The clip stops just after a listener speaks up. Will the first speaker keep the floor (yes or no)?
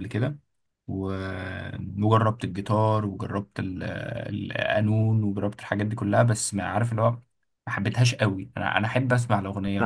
no